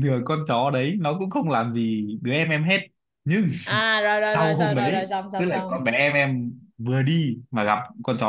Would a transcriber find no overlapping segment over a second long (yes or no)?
no